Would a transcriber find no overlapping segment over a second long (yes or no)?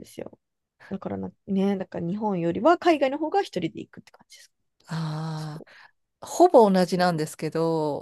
yes